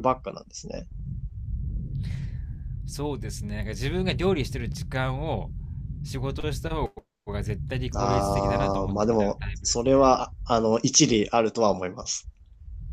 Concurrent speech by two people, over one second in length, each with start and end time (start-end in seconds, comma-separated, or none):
8.0-9.9